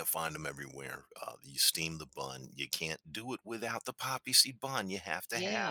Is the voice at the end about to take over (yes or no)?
yes